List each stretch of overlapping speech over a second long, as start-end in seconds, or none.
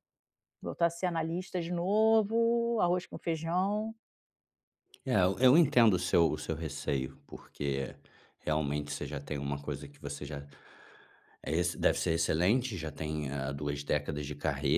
none